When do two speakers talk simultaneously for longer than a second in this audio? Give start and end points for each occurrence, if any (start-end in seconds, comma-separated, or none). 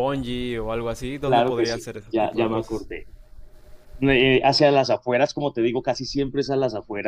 1.2-2.9